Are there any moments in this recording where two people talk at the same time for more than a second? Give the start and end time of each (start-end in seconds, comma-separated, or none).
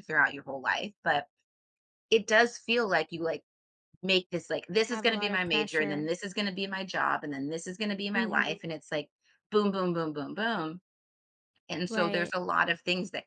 4.8-6.1